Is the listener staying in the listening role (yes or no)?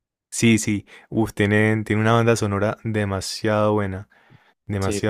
no